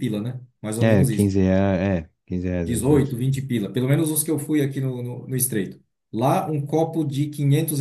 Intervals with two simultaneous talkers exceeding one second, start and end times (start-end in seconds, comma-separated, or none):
none